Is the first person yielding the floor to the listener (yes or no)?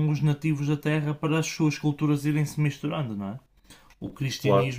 no